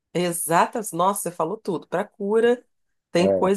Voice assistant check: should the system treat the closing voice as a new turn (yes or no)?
no